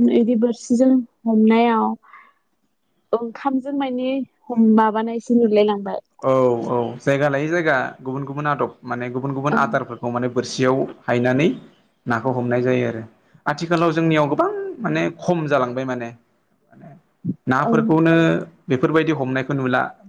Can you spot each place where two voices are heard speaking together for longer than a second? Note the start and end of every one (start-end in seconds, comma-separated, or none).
none